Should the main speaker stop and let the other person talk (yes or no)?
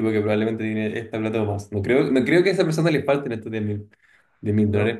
no